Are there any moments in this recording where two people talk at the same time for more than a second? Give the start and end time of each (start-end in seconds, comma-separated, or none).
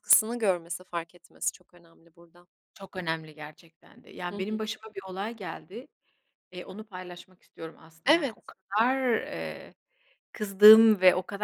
none